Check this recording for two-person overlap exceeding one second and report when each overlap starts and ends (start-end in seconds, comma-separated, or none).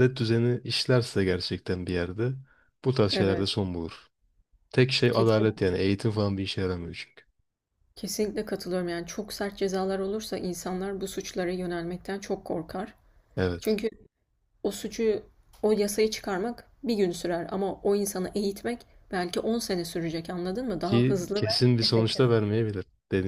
20.8-22.2